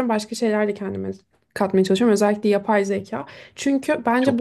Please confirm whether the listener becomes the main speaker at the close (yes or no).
no